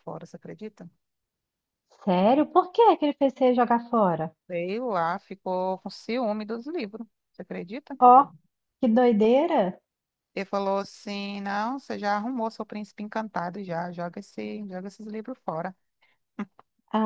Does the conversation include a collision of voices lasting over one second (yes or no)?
no